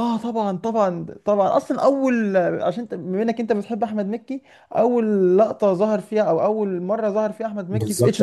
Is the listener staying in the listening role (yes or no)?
no